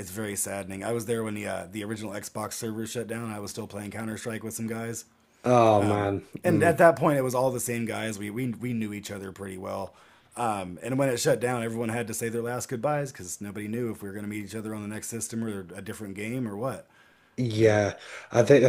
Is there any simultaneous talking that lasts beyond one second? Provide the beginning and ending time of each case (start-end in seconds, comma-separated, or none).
none